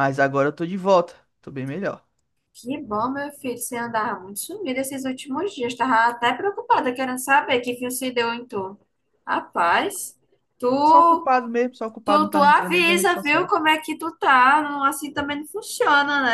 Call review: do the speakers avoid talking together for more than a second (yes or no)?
no